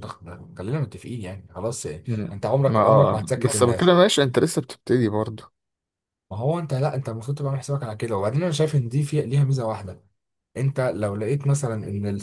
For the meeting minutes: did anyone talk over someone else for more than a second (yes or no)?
yes